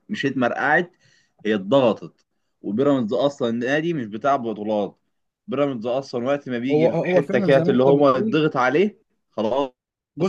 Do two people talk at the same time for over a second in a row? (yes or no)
yes